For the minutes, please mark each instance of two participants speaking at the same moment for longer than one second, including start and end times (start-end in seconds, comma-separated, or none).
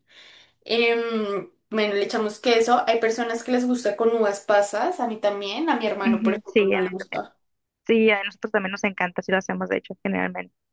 6.0-7.3